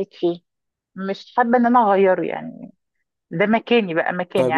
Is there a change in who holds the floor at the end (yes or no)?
yes